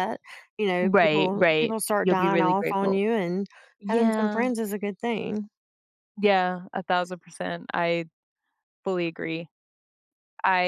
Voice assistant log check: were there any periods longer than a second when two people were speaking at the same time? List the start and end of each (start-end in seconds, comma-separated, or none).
0.8-3.0